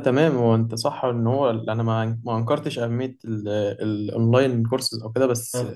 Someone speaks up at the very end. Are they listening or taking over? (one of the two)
listening